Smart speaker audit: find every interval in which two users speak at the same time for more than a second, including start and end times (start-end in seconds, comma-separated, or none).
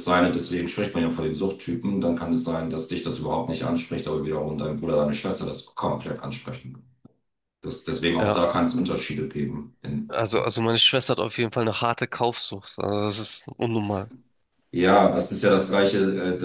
none